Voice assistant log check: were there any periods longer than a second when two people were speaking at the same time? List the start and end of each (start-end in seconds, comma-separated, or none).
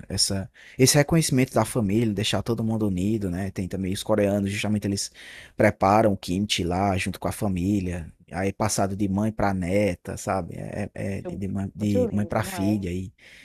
11.2-12.8